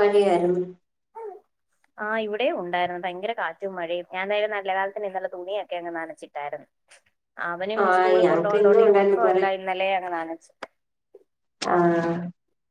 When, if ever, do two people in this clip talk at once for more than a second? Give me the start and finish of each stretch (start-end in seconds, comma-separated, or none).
7.8-9.4